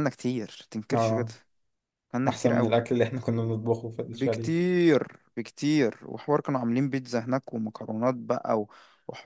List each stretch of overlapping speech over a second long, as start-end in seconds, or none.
none